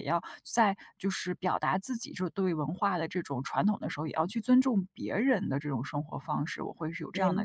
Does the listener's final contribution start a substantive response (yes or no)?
yes